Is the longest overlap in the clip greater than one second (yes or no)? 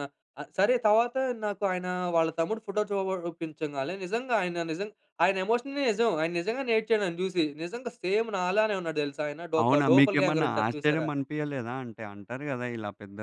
yes